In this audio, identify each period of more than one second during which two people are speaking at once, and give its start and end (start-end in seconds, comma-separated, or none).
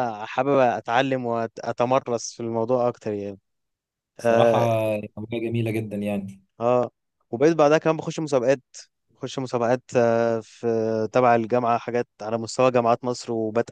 none